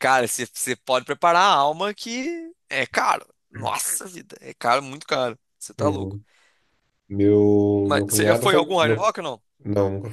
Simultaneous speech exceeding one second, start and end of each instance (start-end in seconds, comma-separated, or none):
7.8-9.2